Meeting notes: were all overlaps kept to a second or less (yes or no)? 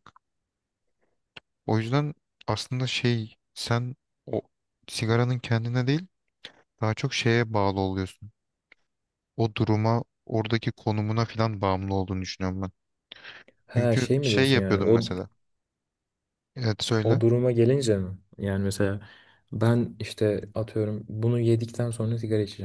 no